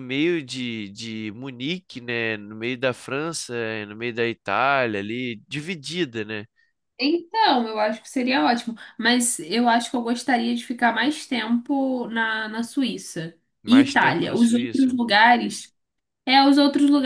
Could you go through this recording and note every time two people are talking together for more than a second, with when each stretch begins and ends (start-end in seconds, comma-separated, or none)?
13.6-15.0